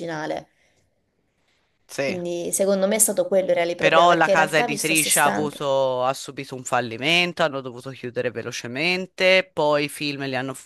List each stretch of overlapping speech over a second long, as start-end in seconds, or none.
3.8-5.6